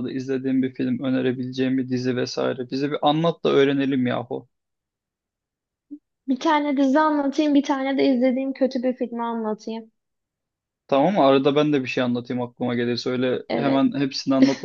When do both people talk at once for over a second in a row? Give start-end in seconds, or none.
none